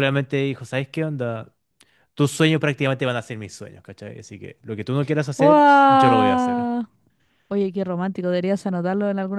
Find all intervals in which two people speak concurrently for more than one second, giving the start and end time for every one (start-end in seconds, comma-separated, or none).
5.4-6.7